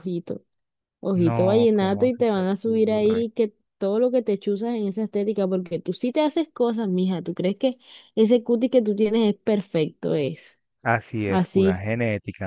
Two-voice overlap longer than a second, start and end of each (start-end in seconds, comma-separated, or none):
1.1-3.2